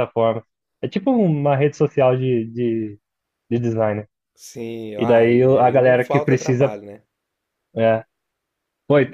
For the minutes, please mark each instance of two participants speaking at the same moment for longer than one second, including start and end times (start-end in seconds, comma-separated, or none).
5.0-6.8